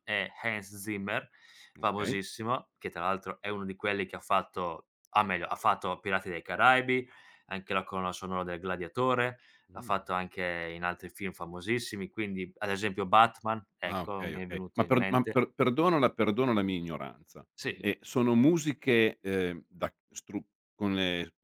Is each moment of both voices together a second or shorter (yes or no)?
no